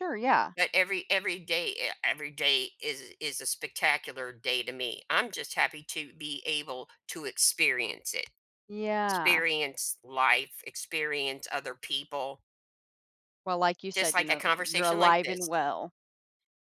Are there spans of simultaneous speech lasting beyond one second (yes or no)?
yes